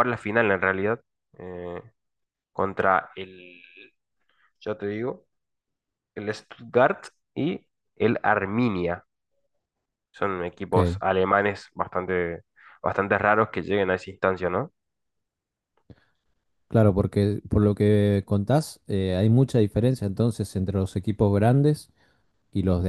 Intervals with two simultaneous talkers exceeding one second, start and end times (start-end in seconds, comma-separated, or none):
none